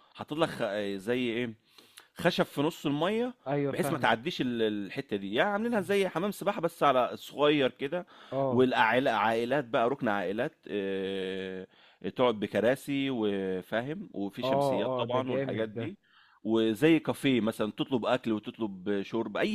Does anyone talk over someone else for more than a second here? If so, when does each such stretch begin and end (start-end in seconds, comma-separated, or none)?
14.4-15.8